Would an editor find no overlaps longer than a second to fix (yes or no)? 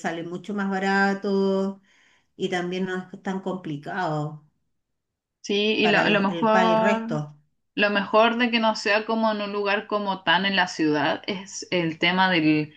no